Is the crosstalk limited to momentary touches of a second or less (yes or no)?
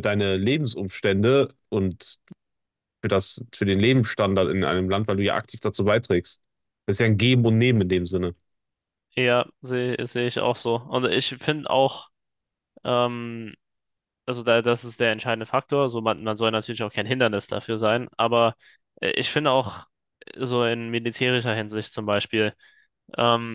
yes